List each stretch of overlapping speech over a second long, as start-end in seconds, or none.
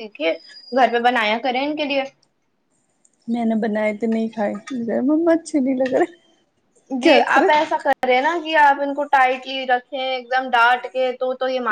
none